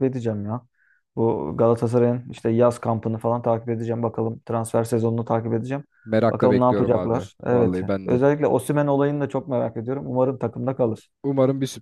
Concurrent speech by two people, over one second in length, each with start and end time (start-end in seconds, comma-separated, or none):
6.3-8.2